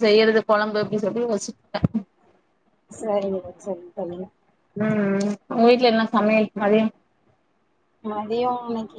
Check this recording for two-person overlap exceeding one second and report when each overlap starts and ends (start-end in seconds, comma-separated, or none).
none